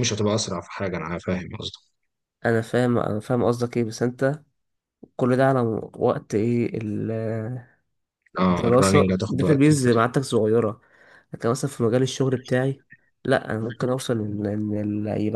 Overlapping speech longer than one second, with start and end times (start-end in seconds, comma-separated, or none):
8.5-10.1